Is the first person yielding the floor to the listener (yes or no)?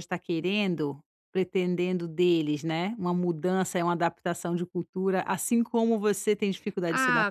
yes